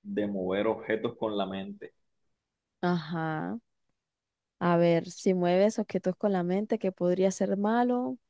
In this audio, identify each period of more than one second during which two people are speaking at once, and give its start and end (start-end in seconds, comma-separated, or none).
none